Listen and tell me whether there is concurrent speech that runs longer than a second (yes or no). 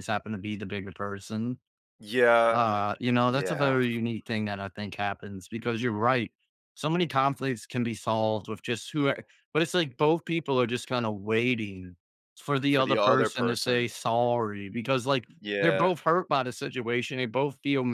yes